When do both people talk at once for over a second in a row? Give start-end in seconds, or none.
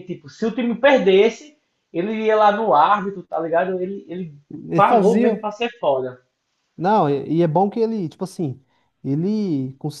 none